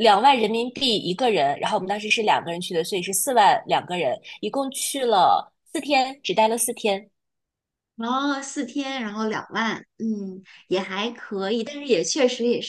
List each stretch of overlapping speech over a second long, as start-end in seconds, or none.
none